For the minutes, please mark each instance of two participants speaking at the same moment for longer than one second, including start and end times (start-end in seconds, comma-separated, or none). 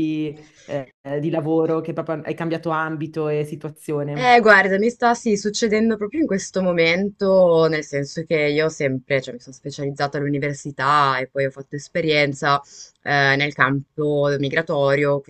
none